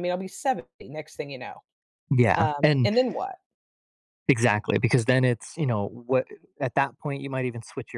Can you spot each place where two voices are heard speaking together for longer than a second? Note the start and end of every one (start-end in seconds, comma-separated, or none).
none